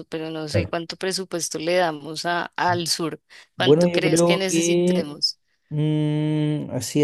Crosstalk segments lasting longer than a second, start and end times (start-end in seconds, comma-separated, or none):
3.5-5.2